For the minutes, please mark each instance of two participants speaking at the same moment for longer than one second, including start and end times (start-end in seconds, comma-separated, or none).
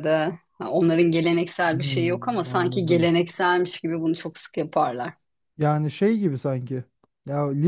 1.7-3.1